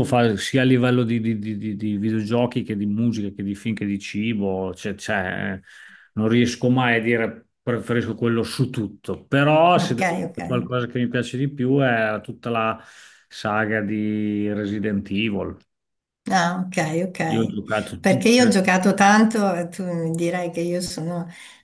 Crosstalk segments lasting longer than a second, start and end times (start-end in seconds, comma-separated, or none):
none